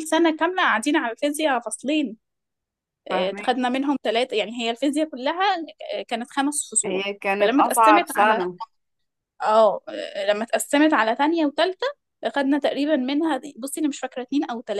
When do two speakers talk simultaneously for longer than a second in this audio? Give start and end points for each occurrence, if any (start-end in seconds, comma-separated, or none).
6.8-8.4